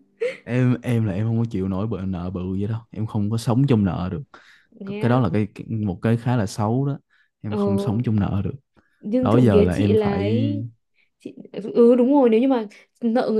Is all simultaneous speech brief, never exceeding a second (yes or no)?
no